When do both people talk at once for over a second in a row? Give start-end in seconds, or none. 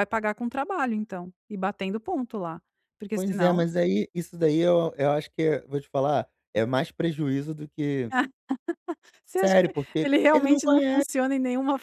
9.4-11.0